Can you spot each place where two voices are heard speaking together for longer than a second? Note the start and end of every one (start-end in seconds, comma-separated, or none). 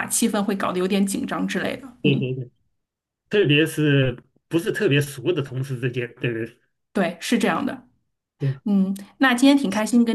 none